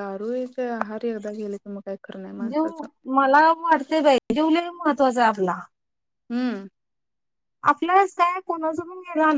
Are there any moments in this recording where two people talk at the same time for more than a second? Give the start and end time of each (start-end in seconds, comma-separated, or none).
none